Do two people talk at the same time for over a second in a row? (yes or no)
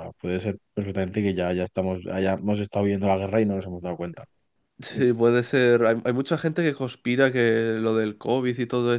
no